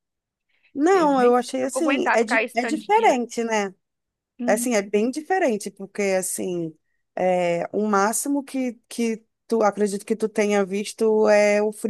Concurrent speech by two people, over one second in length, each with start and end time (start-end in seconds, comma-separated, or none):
0.9-3.2